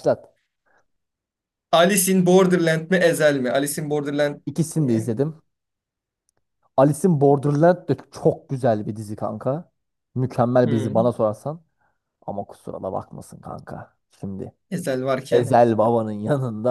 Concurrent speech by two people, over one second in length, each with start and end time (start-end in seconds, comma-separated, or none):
none